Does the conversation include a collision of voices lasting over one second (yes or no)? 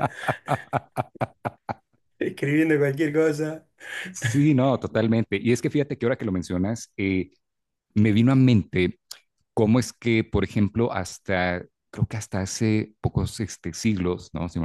no